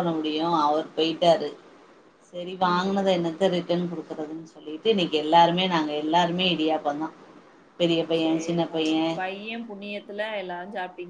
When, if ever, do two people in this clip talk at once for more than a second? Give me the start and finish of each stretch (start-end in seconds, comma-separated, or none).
none